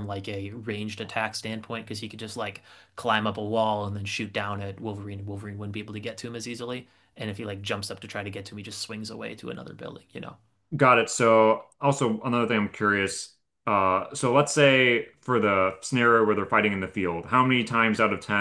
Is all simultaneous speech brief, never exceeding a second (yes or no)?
yes